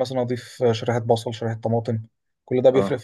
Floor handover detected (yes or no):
yes